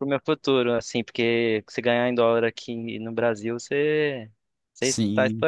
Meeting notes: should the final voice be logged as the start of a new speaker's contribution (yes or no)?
yes